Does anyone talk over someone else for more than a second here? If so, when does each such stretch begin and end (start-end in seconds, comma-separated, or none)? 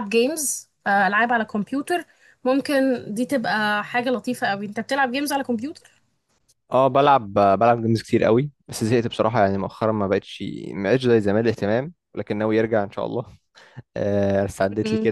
none